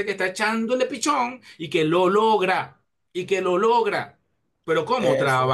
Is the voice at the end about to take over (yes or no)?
no